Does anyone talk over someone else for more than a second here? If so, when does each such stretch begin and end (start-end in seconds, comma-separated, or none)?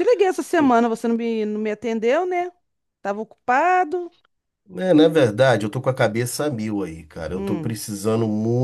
none